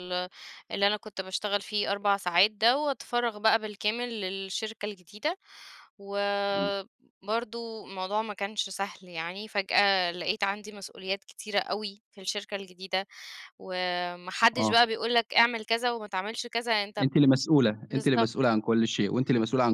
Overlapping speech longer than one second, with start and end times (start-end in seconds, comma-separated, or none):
none